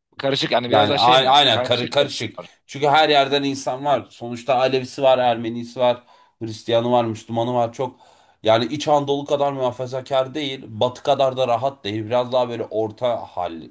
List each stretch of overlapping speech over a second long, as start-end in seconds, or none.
0.7-2.5